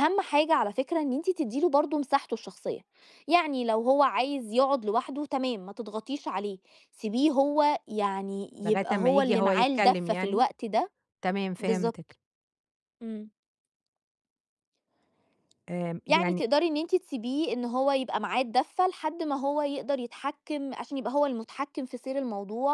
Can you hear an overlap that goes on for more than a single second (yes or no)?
yes